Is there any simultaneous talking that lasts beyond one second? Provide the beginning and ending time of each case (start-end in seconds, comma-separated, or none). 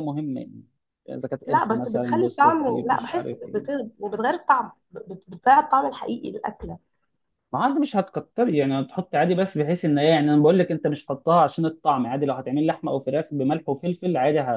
1.5-3.9